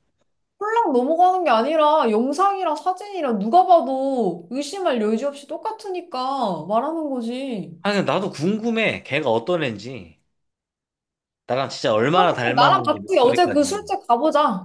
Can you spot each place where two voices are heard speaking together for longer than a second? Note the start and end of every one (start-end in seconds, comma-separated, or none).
12.1-13.8